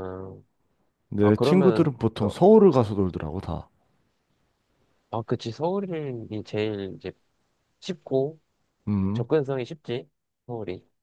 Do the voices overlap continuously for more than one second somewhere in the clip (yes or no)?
yes